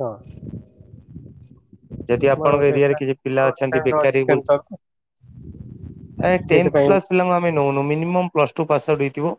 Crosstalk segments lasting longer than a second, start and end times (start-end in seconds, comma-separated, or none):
2.4-4.5